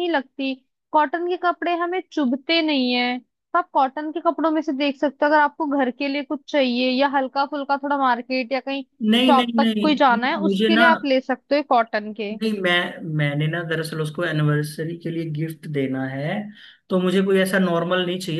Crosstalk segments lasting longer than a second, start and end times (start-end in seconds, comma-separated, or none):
9.3-10.8